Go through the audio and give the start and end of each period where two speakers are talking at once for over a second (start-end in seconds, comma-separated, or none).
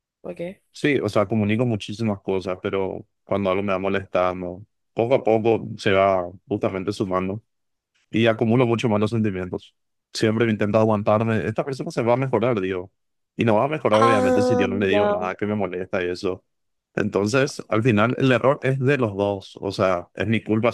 13.9-15.3